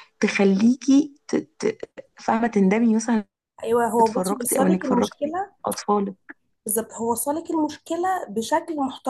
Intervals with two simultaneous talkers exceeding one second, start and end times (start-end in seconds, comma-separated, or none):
4.0-5.5